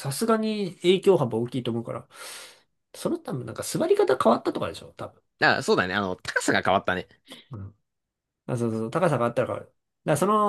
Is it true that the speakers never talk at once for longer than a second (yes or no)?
yes